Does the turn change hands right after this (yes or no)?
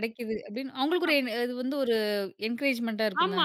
yes